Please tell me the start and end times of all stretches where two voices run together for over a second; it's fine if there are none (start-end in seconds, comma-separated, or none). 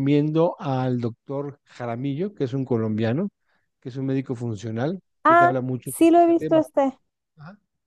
5.2-6.7